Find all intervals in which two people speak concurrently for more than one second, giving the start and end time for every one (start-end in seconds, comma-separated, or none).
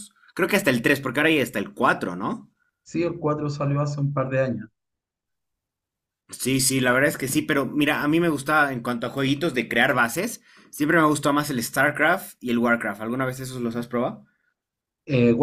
none